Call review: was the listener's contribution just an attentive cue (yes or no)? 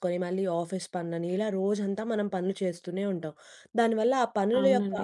yes